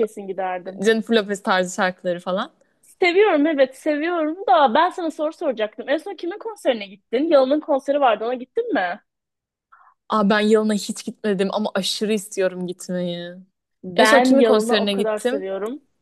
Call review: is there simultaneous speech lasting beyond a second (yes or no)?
yes